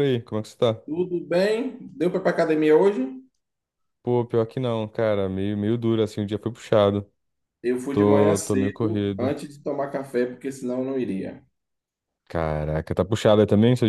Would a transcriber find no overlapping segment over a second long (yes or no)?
no